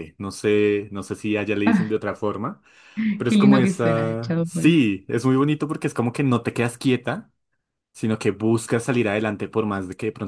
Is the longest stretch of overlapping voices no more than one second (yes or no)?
no